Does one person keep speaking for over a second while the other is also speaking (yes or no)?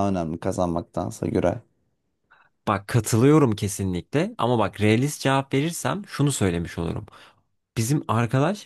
no